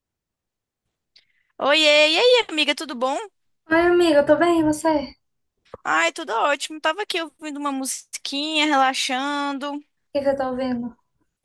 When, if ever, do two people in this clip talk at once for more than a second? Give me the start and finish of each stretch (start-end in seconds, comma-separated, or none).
none